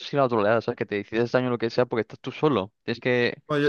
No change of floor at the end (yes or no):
no